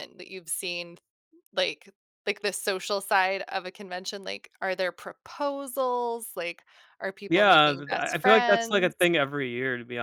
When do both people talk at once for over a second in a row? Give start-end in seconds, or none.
7.3-9.1